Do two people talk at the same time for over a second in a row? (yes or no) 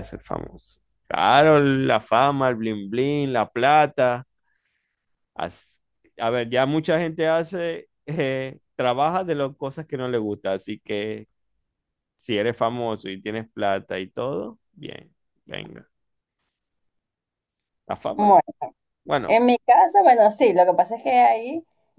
no